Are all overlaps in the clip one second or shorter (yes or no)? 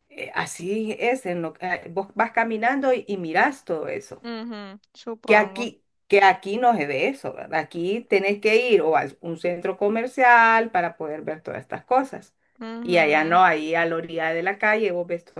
yes